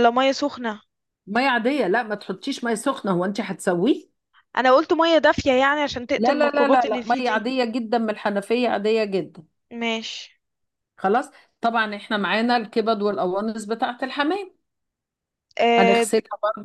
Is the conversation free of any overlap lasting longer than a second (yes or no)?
no